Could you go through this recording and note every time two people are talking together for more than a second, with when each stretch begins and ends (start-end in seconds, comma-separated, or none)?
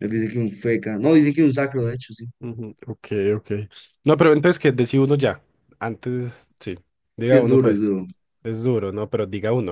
none